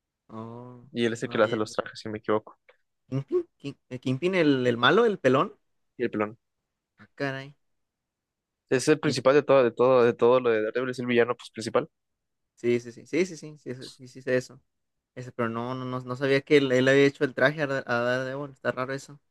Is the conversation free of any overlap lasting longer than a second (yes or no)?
yes